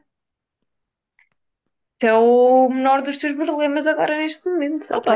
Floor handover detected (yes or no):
yes